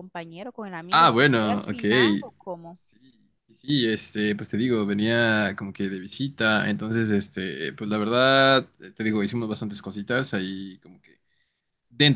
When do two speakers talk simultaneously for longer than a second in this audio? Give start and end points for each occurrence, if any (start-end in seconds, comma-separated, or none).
0.9-2.2